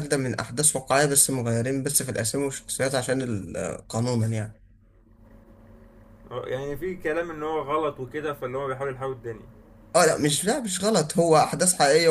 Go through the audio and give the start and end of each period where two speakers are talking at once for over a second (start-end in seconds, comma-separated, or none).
none